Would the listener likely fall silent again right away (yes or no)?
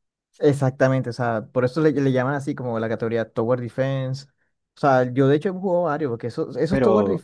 yes